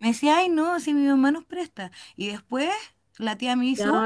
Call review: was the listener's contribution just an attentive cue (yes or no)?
no